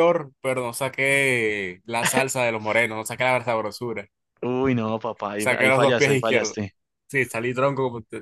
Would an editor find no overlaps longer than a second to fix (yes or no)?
no